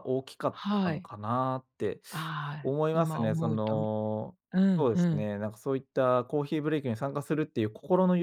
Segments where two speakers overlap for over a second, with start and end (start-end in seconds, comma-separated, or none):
2.6-3.9